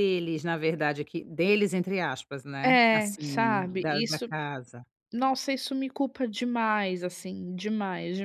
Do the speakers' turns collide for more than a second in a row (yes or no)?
yes